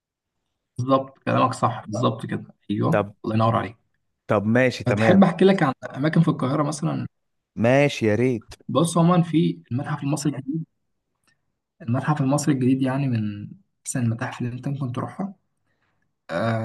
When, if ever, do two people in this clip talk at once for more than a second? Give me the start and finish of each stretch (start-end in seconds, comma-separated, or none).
none